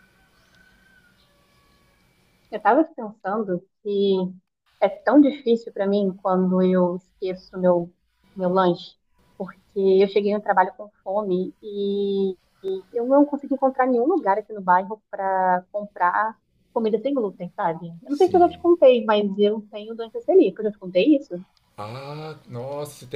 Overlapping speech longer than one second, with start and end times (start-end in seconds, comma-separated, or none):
none